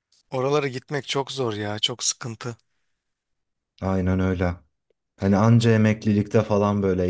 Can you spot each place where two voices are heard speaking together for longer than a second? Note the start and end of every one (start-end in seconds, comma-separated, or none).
none